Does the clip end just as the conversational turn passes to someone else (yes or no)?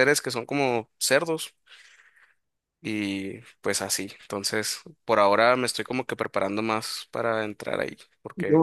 yes